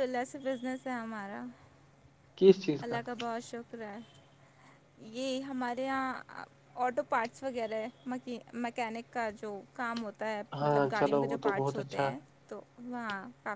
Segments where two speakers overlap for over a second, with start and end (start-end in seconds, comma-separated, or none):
10.6-12.1